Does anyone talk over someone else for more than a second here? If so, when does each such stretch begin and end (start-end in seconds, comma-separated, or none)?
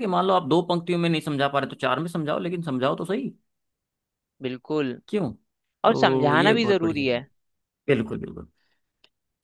5.8-7.2